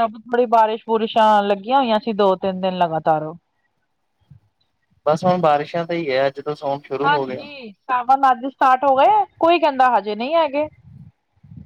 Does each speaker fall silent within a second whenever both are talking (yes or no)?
yes